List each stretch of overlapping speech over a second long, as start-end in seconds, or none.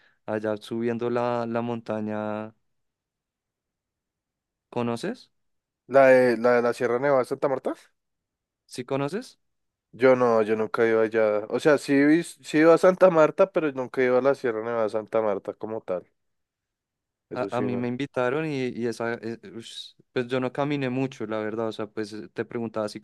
none